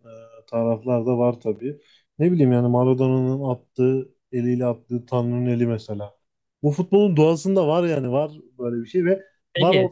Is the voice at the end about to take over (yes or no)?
no